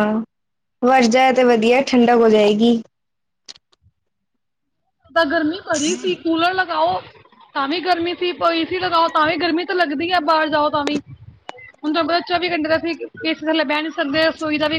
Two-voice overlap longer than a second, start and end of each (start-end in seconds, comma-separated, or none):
none